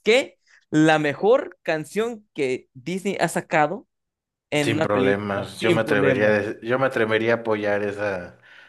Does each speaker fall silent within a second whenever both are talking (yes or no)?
no